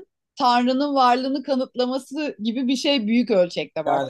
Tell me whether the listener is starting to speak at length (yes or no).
yes